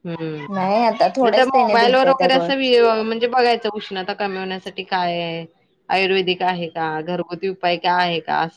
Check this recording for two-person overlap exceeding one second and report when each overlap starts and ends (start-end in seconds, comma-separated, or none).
0.5-2.5